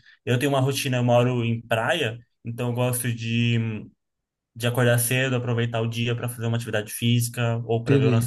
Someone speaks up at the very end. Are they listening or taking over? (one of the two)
listening